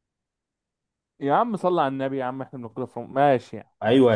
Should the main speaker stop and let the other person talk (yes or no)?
yes